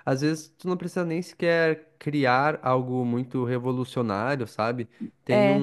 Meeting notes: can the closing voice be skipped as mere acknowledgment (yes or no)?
yes